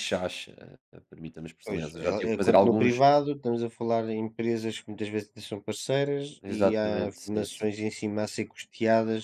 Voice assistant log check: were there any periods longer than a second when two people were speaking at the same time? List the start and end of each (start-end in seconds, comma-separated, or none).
1.7-3.0, 6.4-7.6